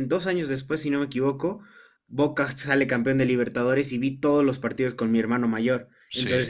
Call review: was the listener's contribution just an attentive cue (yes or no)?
yes